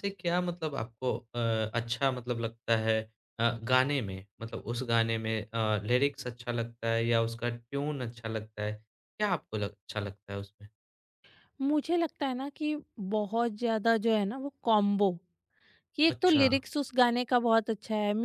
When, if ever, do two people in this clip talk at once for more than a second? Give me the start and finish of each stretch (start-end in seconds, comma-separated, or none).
none